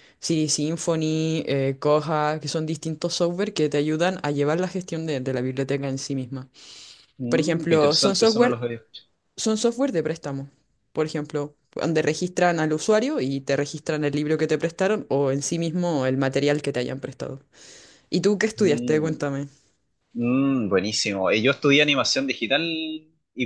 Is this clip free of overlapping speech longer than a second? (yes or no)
no